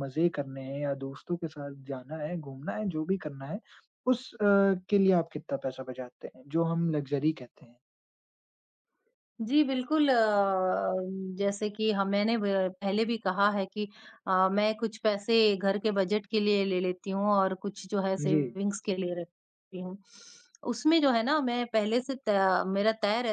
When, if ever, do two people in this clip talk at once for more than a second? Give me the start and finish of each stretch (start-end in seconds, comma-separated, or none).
none